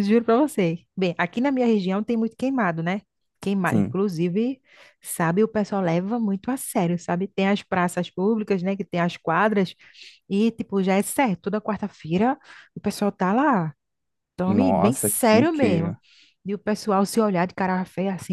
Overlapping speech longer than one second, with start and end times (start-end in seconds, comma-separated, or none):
14.4-15.9